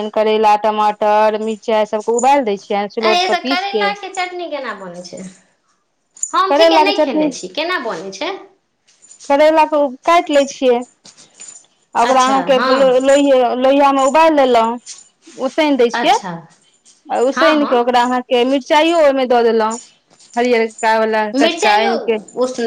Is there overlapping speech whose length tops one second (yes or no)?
no